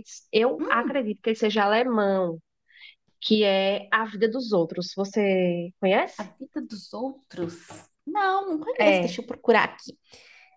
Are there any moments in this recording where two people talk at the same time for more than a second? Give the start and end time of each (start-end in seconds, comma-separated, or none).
none